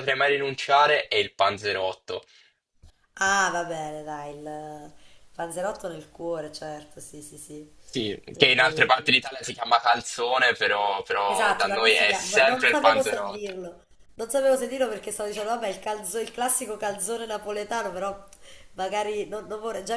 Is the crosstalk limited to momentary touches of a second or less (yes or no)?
no